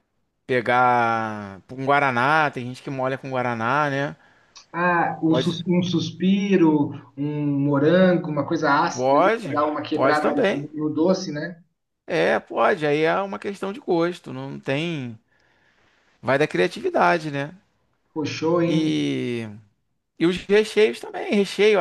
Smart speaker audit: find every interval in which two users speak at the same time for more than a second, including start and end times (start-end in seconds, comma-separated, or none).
8.9-10.7